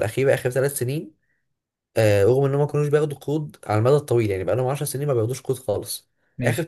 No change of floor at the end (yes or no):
yes